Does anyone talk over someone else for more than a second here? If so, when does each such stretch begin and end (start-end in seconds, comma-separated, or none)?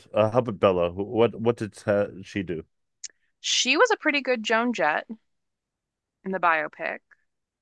none